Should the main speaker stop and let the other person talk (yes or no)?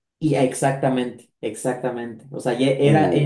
no